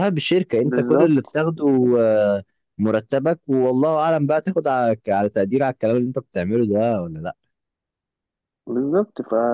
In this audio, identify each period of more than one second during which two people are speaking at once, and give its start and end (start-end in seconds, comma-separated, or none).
0.7-1.9